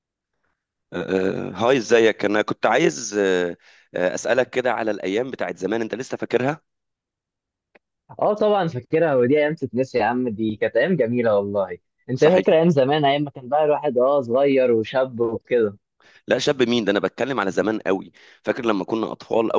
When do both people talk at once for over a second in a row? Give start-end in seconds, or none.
none